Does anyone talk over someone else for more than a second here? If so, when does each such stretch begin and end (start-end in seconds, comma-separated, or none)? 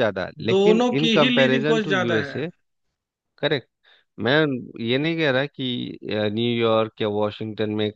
0.5-2.3